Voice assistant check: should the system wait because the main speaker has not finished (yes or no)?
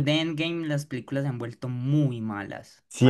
no